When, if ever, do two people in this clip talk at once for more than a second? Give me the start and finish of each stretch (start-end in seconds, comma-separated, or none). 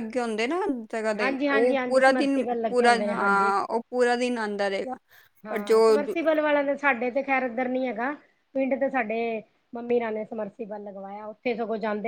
1.2-3.5